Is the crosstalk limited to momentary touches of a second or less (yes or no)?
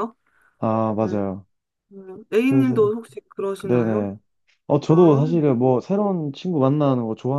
yes